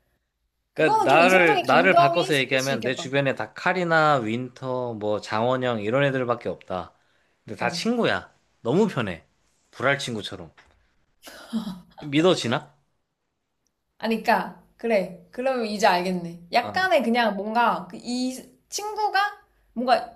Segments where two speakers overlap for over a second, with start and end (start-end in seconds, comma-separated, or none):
0.7-3.0